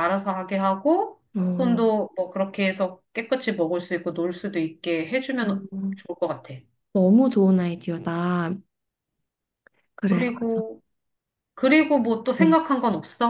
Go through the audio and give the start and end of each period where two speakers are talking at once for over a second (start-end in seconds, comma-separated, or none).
none